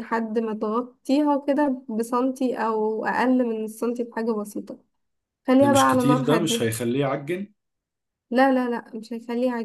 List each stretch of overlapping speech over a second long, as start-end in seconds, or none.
5.6-6.8